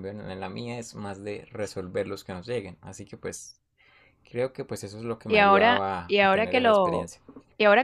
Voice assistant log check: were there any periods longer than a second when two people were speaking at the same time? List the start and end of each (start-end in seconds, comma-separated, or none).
5.3-7.1